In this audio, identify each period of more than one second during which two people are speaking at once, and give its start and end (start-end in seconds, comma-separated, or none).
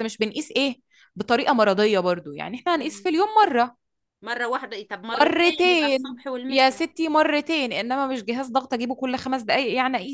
5.1-6.8